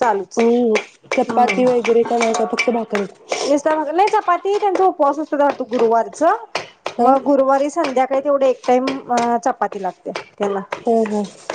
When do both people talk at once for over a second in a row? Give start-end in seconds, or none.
none